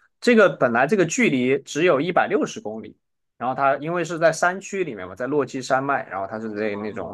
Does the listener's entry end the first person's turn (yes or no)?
no